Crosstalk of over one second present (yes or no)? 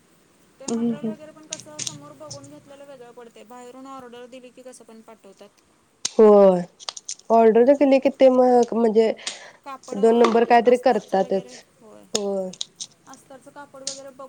yes